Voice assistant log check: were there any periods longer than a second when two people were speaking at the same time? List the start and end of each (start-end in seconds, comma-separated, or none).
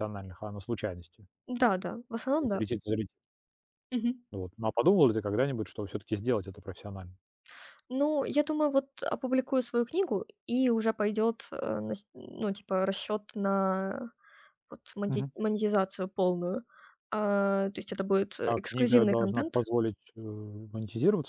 18.4-19.6